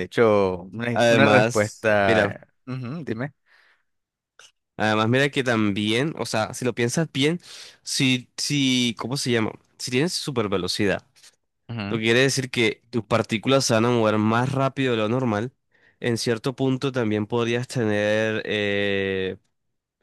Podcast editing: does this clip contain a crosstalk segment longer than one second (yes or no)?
yes